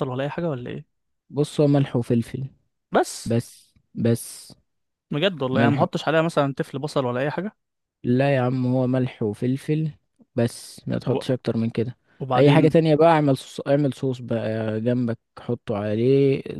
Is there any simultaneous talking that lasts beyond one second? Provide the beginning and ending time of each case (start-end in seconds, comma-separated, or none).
none